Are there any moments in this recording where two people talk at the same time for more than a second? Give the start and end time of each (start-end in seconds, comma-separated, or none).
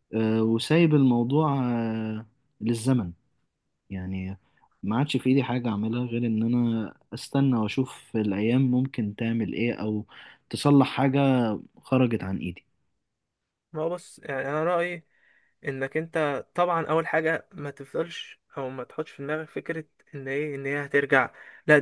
none